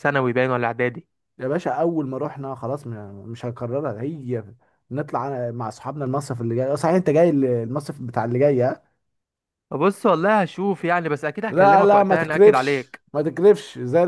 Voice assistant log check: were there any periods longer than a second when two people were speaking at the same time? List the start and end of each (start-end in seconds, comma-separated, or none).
11.5-13.0